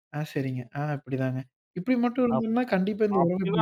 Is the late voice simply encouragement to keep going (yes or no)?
no